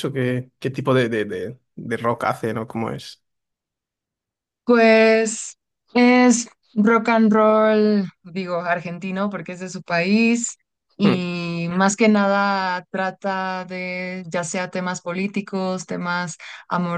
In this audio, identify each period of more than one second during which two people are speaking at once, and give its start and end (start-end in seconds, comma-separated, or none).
none